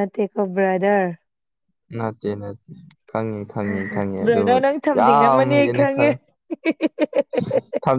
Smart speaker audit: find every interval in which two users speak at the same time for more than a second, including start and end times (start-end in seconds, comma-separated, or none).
4.2-6.0